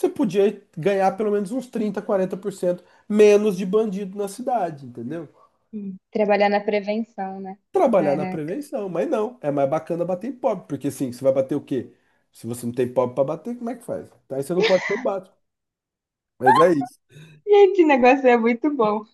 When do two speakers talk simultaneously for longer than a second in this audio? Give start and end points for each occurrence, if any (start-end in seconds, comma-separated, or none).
none